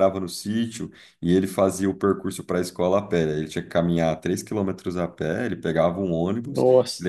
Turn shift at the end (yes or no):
no